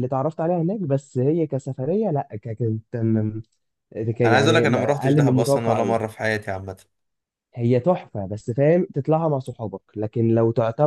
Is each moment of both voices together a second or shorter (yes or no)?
no